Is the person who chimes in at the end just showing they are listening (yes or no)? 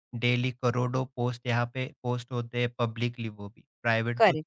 yes